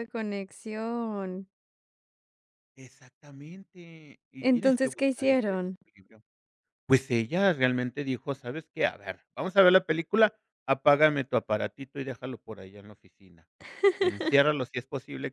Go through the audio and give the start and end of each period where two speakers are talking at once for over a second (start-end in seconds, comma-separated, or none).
4.4-5.8